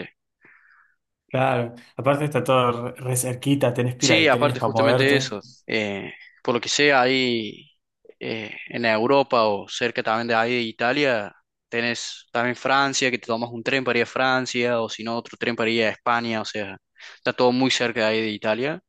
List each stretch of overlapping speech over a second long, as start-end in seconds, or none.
4.0-5.3